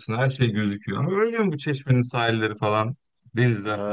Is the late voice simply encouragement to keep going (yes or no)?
no